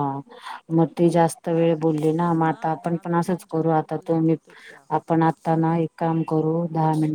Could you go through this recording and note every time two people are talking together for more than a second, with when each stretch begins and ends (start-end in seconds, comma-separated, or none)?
2.5-4.4